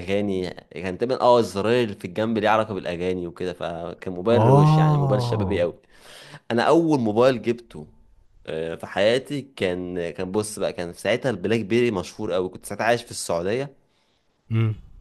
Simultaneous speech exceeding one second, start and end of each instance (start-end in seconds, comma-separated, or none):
4.3-5.6